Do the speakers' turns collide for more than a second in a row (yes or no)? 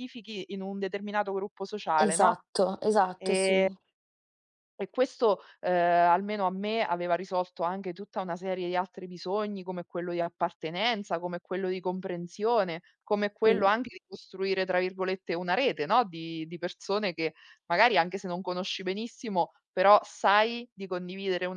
no